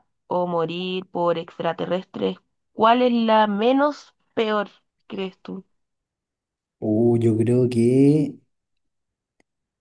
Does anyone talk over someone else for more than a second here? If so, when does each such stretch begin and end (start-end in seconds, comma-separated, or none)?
none